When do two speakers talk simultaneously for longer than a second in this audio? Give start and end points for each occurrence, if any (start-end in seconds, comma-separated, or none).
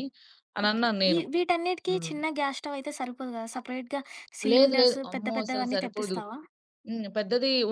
4.5-6.2